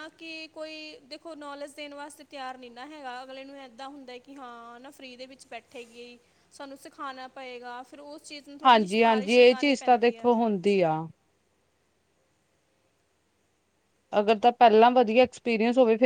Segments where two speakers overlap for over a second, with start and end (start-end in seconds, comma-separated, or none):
8.6-10.3